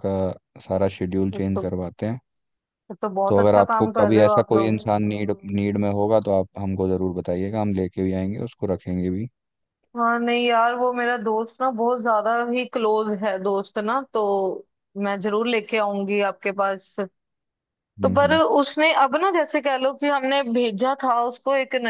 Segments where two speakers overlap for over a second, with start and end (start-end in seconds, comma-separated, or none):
3.3-4.8